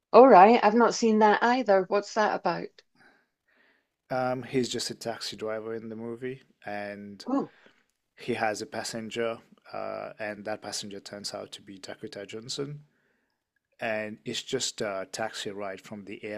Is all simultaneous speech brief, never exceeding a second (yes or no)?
yes